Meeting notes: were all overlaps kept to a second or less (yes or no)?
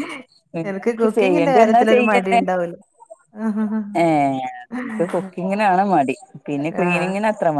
no